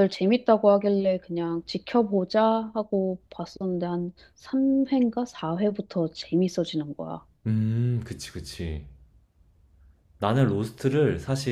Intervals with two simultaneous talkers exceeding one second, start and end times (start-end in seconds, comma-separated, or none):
none